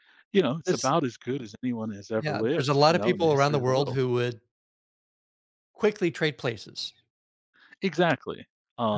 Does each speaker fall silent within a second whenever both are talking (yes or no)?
no